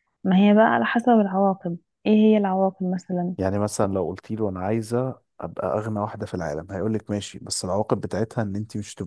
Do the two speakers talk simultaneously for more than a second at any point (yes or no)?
no